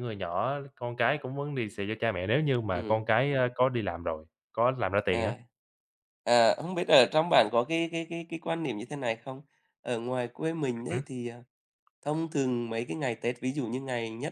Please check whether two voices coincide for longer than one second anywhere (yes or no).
no